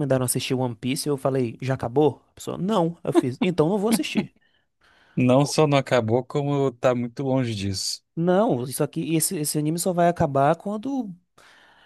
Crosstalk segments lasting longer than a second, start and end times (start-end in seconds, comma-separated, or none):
none